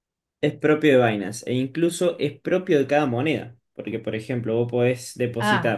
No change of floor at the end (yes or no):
no